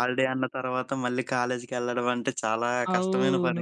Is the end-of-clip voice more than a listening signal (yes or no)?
yes